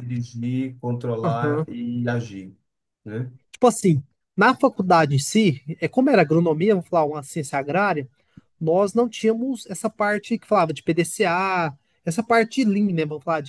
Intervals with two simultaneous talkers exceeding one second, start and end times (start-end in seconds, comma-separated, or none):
none